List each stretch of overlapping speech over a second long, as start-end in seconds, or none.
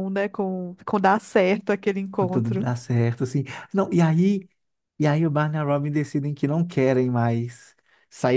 none